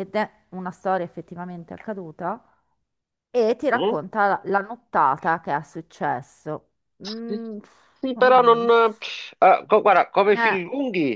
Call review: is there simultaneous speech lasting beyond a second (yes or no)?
no